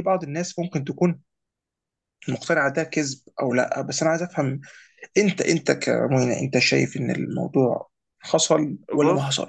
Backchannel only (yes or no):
no